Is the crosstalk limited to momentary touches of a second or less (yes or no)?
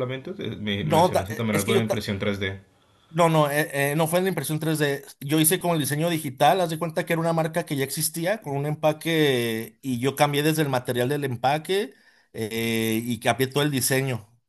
no